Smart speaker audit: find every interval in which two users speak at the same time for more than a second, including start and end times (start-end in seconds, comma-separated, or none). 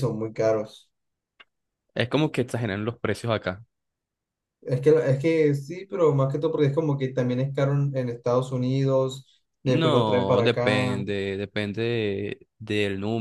9.6-11.0